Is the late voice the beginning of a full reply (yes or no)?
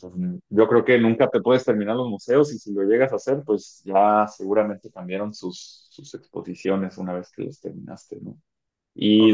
no